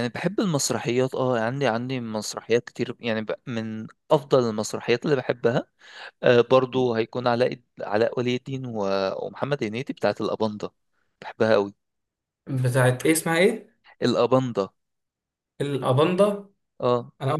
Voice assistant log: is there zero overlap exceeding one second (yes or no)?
yes